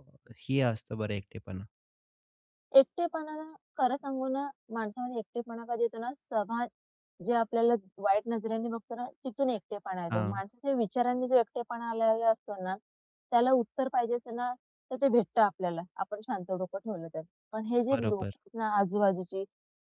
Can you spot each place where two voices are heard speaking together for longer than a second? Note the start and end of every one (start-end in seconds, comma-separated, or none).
none